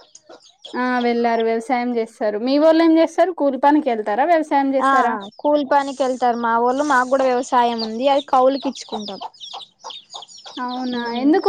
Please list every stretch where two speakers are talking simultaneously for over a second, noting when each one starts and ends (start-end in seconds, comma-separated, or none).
none